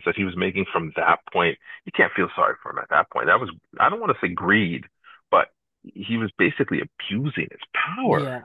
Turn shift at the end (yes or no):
yes